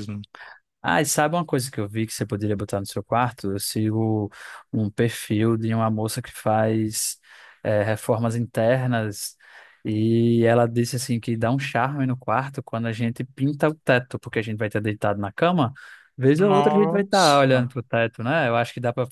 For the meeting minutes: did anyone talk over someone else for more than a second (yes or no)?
yes